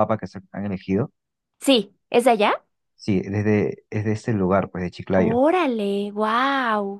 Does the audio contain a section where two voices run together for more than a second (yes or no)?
no